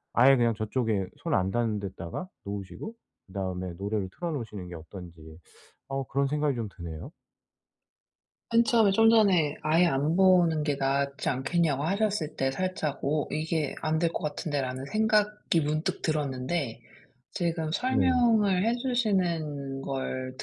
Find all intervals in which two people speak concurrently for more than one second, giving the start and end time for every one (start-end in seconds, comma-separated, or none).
none